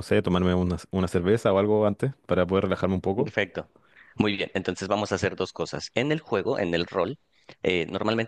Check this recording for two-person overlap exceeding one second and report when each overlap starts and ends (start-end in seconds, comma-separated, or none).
none